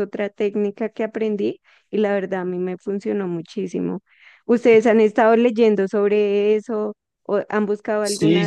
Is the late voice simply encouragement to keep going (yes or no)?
no